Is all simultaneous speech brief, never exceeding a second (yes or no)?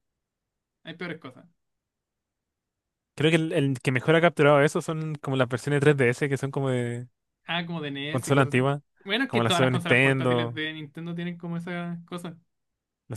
no